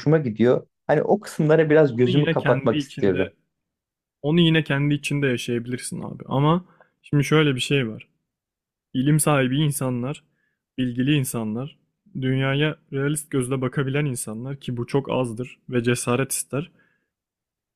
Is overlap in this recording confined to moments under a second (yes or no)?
no